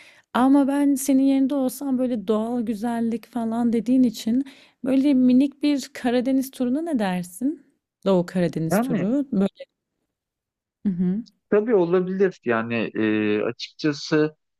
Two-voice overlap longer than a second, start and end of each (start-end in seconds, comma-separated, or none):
none